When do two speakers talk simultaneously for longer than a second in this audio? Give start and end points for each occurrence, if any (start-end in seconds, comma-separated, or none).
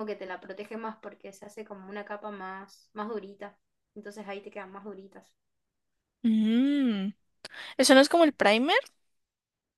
none